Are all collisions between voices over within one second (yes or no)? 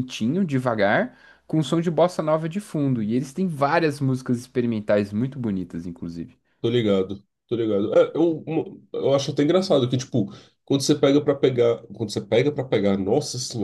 yes